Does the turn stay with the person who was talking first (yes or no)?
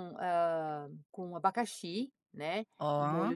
yes